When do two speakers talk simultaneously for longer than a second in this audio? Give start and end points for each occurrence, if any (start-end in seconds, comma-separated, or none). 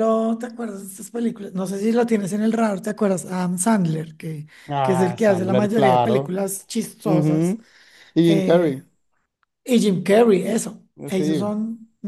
4.7-6.3